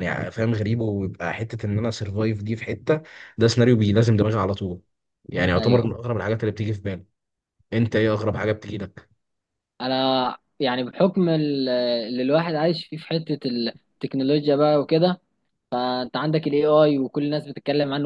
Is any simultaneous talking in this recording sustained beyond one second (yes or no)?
no